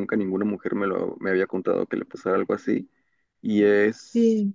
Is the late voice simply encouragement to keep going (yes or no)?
yes